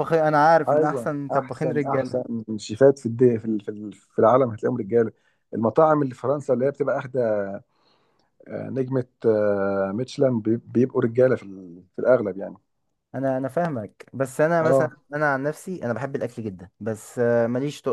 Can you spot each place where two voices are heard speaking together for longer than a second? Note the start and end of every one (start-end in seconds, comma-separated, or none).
0.7-2.2